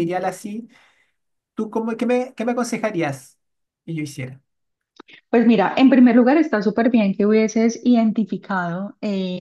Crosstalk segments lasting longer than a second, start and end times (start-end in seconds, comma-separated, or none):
none